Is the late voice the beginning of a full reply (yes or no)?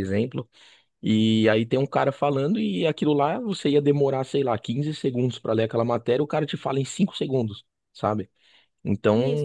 no